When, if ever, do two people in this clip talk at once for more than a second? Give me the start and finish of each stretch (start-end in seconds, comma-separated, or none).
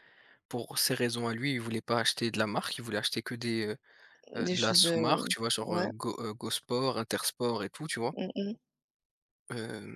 4.4-5.9